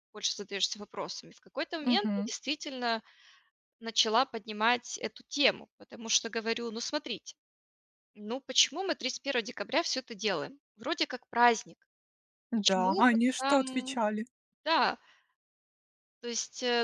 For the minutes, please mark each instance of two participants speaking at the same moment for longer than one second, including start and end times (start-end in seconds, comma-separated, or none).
12.5-14.0